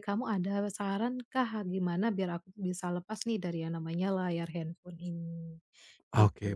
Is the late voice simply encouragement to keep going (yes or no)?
no